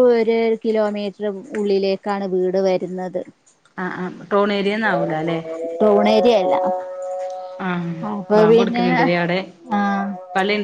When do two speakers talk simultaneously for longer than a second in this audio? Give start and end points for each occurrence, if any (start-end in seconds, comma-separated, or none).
none